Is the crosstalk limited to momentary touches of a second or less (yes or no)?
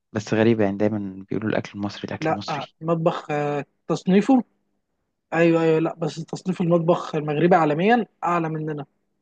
yes